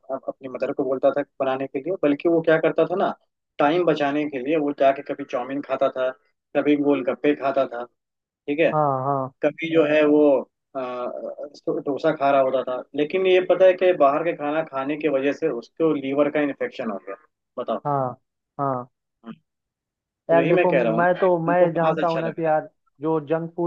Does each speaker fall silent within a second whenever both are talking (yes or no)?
no